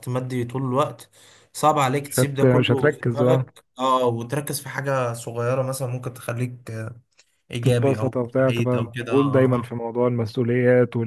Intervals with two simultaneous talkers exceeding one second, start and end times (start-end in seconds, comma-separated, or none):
2.0-3.5, 7.6-9.7